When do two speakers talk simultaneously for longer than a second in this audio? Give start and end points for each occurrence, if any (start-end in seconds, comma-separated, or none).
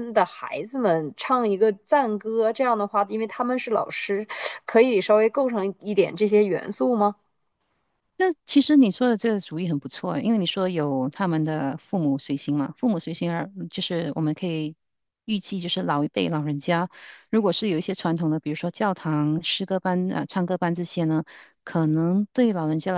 none